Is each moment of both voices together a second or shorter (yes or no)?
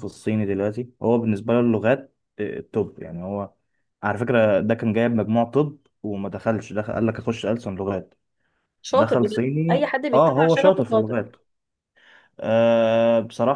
no